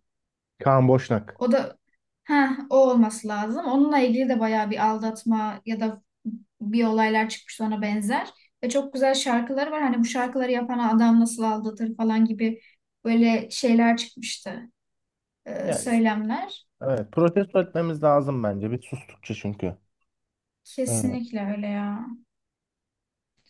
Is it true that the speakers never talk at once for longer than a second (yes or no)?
yes